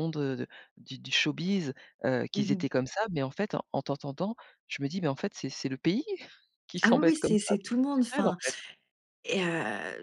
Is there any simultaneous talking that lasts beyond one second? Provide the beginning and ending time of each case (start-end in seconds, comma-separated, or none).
6.8-8.4